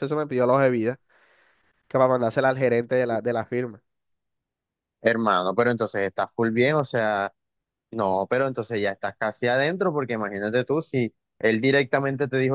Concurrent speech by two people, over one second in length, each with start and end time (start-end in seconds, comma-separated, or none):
none